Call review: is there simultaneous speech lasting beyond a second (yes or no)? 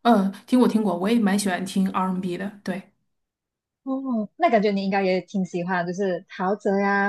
no